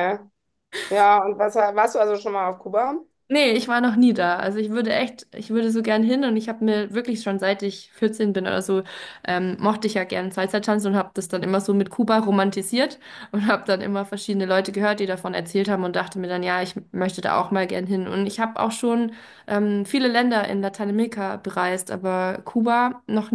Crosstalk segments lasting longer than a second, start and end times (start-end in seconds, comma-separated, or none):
none